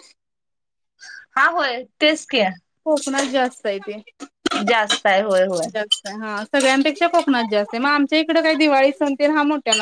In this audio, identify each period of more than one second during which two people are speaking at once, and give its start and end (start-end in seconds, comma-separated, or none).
none